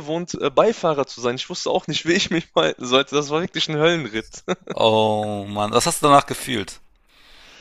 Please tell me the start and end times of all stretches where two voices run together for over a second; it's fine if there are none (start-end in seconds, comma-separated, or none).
none